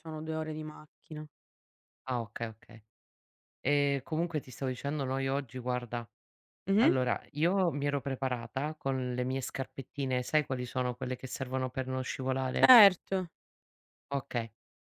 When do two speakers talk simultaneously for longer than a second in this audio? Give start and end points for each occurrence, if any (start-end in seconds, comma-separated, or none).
none